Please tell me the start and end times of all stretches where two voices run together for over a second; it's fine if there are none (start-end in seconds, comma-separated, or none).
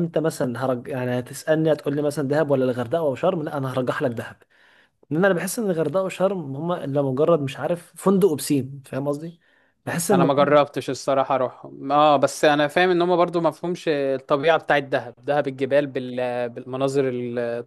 none